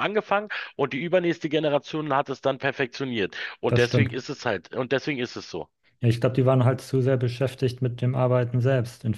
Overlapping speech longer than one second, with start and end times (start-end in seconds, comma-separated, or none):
none